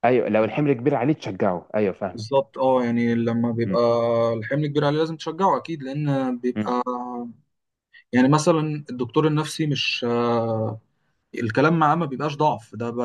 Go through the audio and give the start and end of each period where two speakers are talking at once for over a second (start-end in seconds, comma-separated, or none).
none